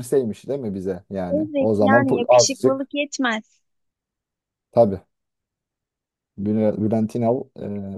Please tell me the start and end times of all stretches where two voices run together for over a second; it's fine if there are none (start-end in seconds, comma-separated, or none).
1.3-2.9